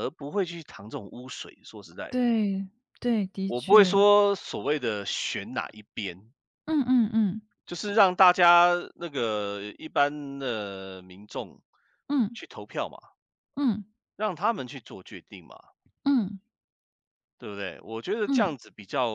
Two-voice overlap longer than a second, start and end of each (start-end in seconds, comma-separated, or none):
none